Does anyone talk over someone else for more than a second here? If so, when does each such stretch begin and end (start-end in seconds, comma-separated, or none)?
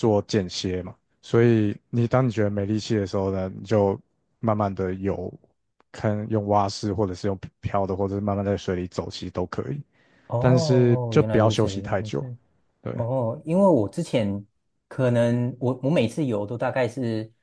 10.4-12.2